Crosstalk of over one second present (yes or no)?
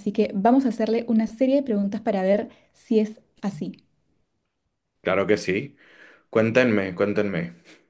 no